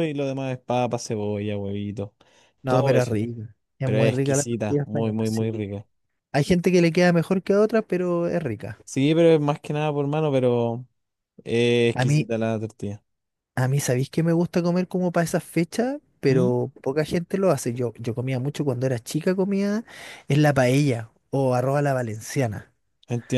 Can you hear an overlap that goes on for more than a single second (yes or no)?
yes